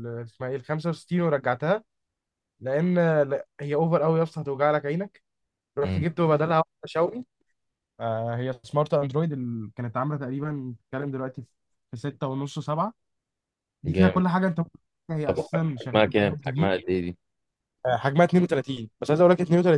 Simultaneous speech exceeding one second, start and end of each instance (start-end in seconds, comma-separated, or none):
15.2-16.7